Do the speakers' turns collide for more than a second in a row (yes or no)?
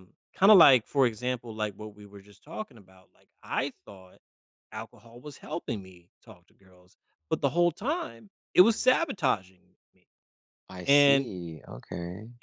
no